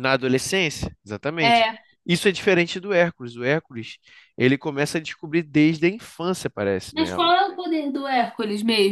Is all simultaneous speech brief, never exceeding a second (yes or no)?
yes